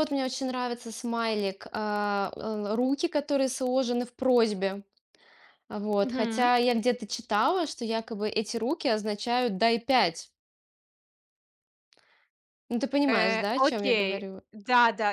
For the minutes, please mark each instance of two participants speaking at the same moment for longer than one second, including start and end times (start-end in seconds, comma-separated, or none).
13.1-14.4